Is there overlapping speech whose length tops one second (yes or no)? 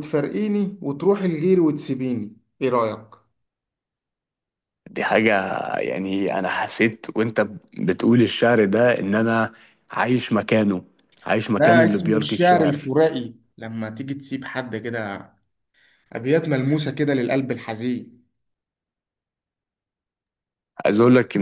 yes